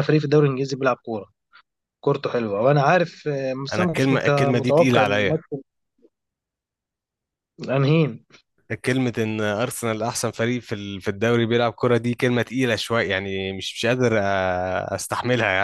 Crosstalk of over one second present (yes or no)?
yes